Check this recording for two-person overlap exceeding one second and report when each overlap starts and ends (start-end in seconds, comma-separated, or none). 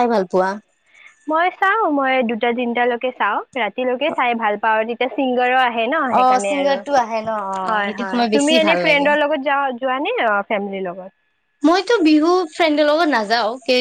6.1-9.1